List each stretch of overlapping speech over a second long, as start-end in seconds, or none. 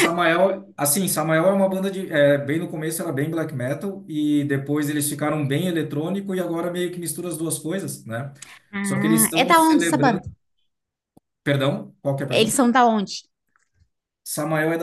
8.8-10.2